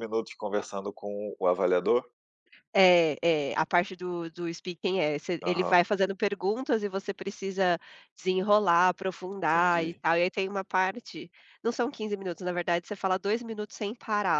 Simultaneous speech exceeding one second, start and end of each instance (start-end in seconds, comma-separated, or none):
none